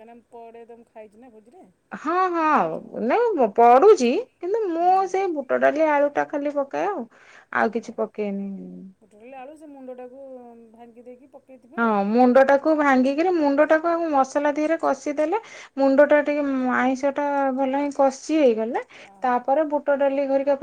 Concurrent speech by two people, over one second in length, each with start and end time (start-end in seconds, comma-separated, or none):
none